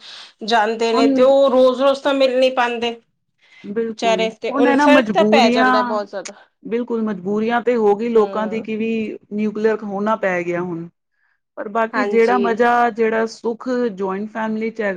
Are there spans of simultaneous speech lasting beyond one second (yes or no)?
yes